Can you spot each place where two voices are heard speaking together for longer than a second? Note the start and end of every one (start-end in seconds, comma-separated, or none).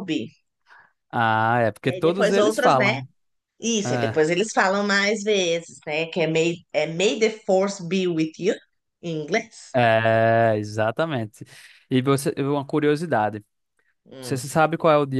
1.8-3.0